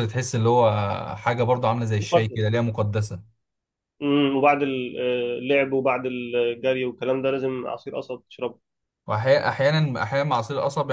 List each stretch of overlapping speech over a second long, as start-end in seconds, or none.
none